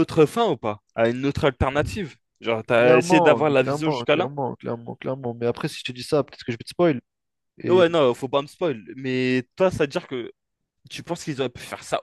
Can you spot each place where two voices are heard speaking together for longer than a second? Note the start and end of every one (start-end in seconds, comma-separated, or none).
2.7-4.3